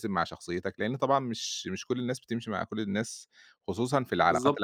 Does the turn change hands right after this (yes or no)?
yes